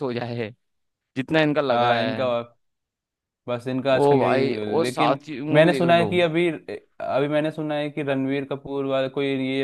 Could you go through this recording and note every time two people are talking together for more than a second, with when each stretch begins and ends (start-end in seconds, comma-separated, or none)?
3.9-6.1